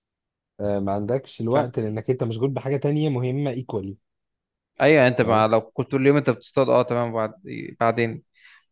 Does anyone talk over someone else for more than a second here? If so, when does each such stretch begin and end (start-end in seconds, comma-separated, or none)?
none